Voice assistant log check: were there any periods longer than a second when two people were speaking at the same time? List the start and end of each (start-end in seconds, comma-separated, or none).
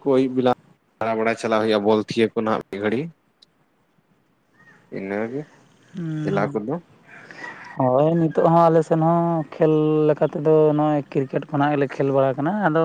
none